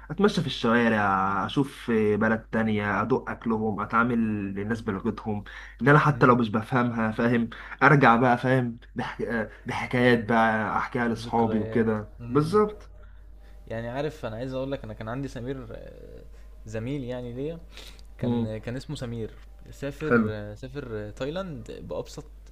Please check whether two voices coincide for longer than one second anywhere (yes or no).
yes